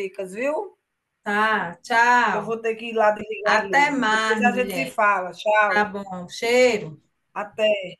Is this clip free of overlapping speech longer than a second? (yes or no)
no